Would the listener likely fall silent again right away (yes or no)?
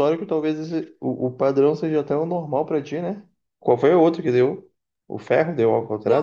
no